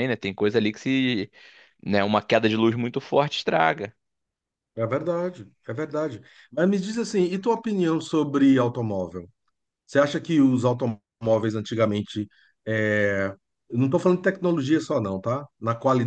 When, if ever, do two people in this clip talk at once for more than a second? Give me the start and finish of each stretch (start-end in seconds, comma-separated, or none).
none